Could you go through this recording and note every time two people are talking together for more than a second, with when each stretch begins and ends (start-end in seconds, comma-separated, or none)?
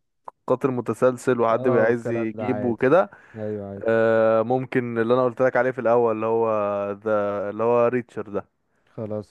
1.5-2.8